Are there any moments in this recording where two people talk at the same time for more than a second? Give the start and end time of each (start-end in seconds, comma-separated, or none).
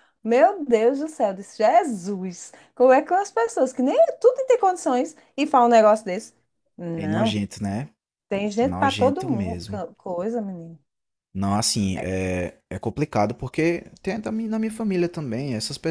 8.6-9.8